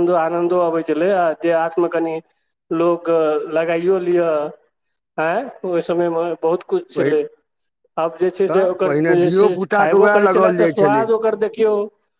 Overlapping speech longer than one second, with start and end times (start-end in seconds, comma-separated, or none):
8.4-11.0